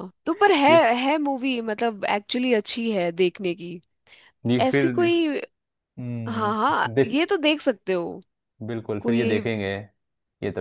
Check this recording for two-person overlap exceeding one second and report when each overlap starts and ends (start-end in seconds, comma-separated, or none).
none